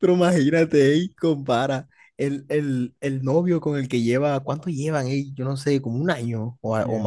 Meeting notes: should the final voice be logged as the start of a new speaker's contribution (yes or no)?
yes